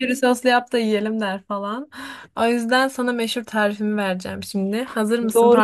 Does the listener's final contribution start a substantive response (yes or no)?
yes